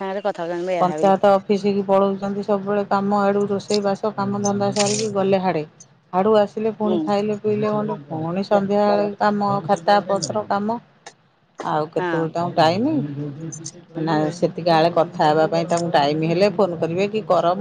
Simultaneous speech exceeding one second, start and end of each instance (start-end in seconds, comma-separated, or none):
none